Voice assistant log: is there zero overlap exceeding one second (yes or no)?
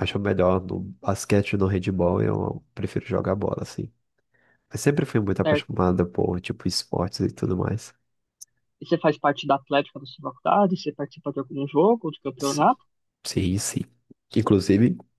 yes